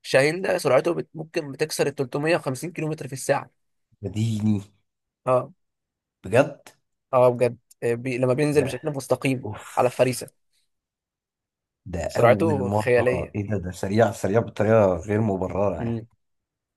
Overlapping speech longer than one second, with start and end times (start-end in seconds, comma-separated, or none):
12.1-13.4